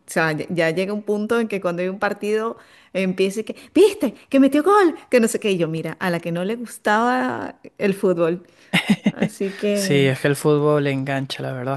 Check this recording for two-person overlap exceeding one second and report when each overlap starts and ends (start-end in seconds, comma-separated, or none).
none